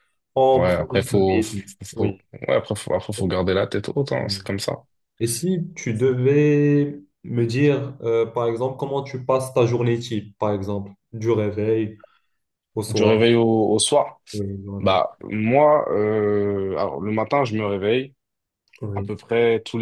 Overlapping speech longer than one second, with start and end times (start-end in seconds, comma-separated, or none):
0.5-2.2